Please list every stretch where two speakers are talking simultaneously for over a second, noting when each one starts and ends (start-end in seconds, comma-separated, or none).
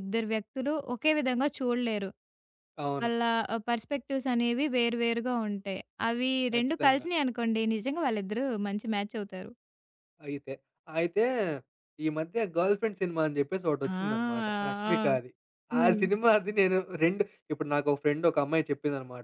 13.9-15.2